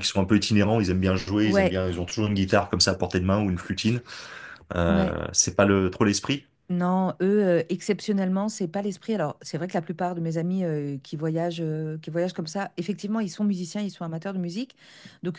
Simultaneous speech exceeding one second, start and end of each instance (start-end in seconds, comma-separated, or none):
none